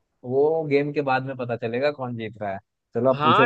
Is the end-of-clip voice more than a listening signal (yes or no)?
yes